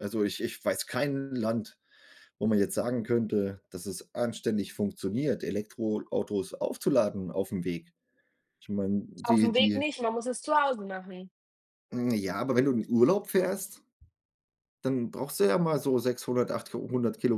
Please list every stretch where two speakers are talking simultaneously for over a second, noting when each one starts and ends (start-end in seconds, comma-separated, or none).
none